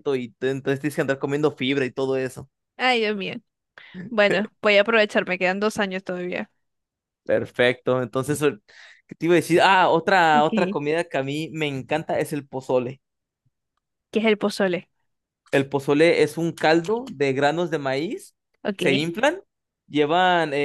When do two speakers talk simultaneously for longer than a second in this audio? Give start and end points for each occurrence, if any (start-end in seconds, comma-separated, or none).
none